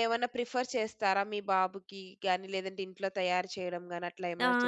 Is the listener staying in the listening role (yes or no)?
no